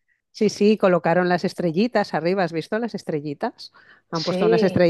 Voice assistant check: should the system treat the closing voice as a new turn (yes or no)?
no